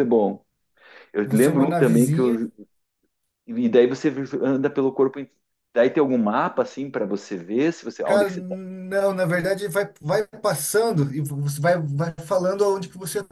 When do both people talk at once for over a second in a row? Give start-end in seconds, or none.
1.2-2.4